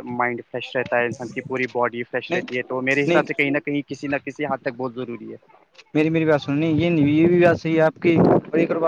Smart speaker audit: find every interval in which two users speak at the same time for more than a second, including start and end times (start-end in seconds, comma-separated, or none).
none